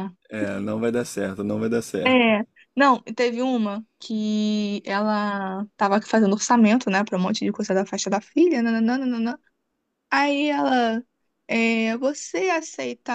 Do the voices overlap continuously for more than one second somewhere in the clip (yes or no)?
no